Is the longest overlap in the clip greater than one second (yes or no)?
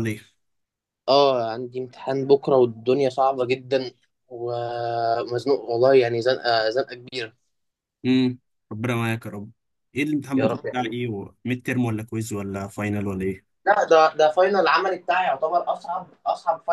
no